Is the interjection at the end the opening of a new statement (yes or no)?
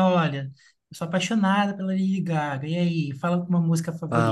yes